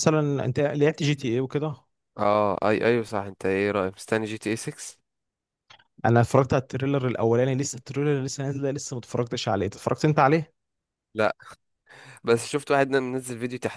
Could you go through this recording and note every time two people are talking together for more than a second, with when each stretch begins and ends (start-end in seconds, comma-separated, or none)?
none